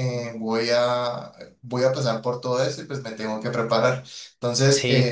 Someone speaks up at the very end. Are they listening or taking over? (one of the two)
listening